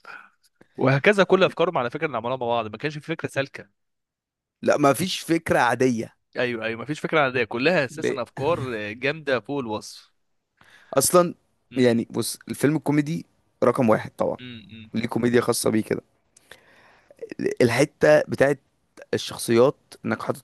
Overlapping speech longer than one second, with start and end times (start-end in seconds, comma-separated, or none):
none